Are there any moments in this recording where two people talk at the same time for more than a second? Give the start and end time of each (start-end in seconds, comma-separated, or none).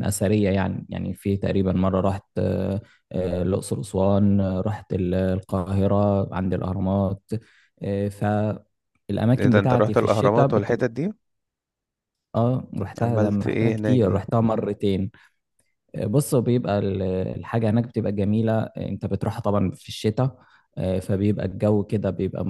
9.4-10.9, 13.0-14.2